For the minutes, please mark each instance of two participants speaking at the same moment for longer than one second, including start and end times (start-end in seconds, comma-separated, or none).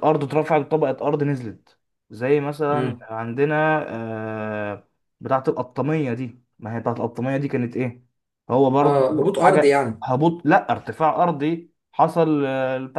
8.8-10.1